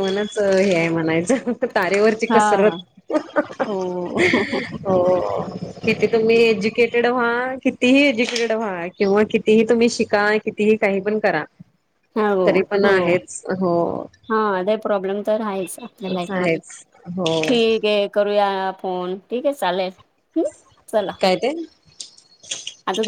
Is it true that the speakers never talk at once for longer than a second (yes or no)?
yes